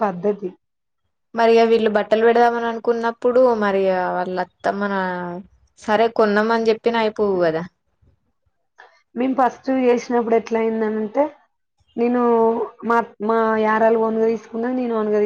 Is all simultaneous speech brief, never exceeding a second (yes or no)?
yes